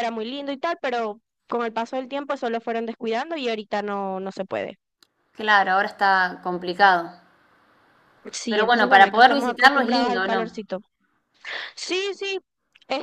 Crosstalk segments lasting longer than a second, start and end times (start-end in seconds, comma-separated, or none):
8.5-10.7